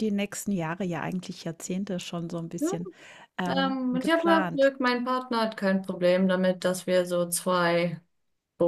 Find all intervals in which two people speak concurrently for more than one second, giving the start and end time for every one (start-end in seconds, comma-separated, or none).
3.5-4.7